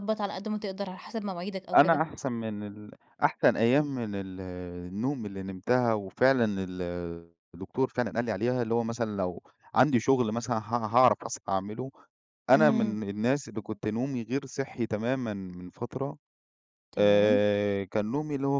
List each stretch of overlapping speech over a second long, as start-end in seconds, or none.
none